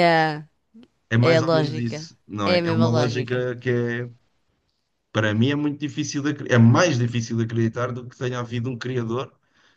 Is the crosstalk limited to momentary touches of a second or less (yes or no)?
no